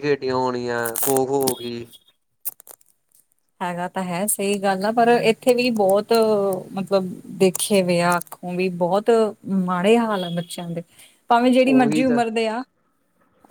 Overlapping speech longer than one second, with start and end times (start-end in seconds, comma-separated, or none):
none